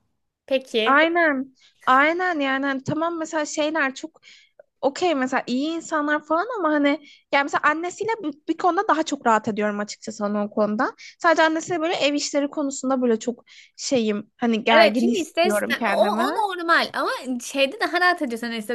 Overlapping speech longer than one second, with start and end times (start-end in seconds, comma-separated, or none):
14.7-16.3